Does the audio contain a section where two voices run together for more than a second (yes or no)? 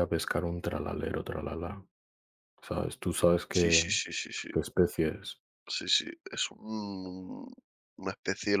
no